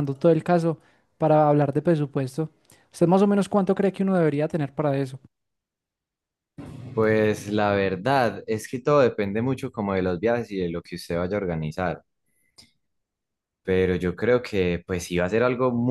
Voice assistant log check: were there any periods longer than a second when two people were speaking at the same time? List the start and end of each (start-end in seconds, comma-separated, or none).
none